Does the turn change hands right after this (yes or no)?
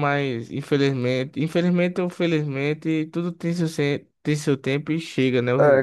yes